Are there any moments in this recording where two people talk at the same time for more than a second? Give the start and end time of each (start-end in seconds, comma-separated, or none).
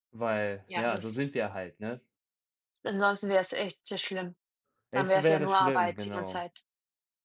4.9-6.5